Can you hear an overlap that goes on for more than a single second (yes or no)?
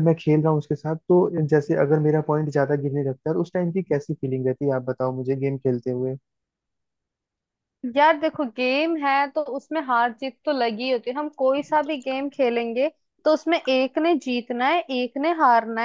no